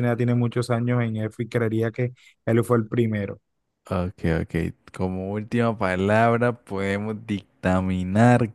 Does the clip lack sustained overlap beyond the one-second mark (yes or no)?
yes